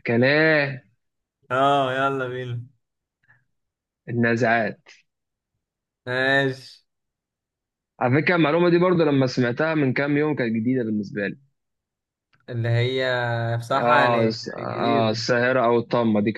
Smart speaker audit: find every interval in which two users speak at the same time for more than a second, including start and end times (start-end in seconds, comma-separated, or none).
13.7-15.2